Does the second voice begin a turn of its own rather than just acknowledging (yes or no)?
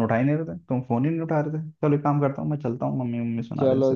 yes